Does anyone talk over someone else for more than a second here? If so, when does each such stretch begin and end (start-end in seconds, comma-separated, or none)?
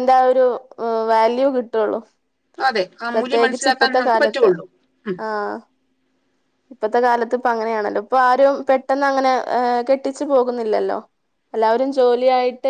3.1-4.5